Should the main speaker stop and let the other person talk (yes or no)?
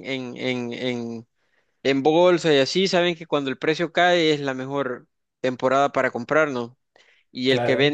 no